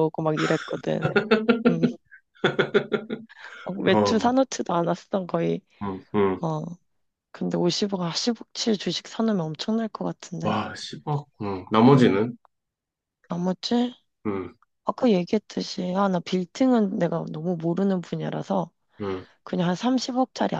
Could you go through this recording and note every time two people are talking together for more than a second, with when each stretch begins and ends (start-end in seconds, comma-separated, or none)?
none